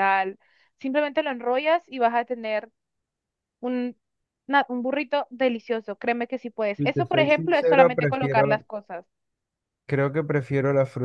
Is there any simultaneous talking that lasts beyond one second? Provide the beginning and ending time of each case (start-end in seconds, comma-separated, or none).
6.8-8.6